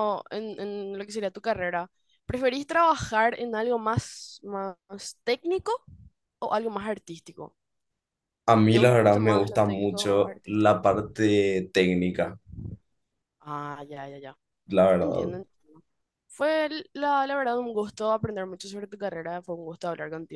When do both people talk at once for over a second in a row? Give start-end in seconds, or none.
8.7-10.8